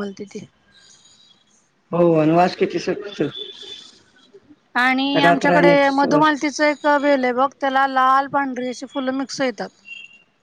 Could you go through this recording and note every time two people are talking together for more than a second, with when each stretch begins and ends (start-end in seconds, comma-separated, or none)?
5.2-6.5